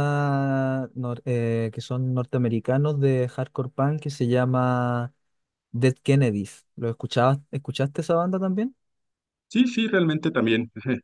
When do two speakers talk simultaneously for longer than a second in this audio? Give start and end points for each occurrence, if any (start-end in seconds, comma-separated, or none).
none